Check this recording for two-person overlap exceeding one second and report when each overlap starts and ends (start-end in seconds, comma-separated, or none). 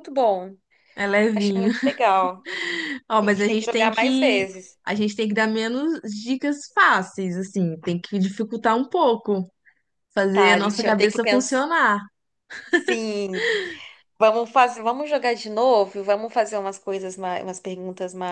3.2-4.5, 10.3-11.6